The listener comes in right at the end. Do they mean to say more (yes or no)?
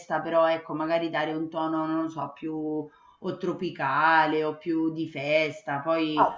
yes